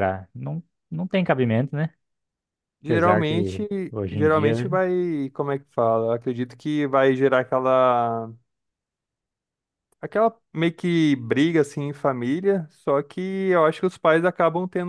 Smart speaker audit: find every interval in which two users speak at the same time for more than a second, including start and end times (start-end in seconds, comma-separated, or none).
2.8-4.7